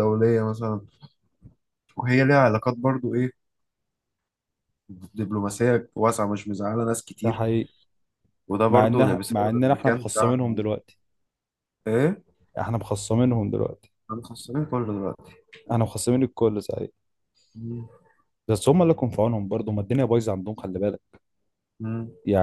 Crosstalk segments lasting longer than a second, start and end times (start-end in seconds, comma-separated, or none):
8.7-10.6